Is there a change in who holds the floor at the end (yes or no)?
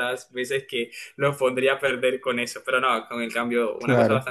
no